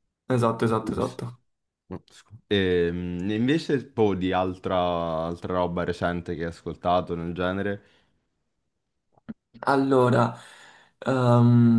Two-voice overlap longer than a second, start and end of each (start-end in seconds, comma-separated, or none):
none